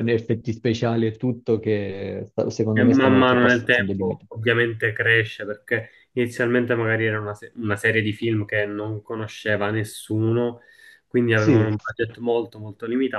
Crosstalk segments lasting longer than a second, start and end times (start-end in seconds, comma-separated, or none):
2.7-4.3